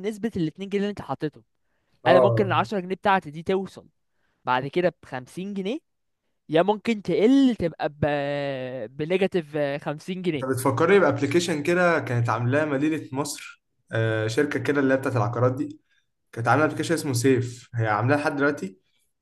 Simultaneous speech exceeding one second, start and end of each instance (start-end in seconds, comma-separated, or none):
none